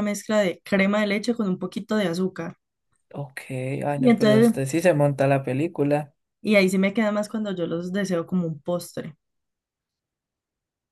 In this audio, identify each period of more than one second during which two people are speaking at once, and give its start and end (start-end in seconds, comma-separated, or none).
none